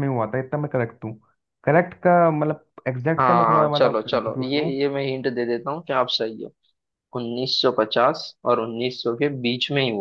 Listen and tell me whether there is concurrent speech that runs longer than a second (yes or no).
yes